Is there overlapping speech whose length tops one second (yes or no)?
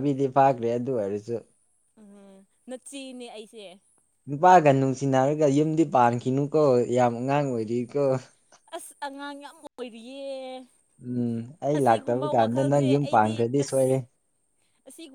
yes